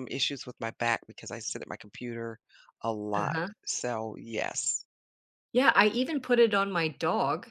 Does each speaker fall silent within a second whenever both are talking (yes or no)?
yes